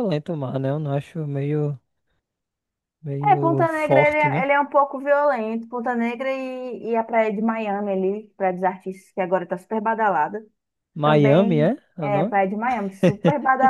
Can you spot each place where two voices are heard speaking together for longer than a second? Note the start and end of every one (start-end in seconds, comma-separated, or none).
3.2-4.5, 11.0-12.3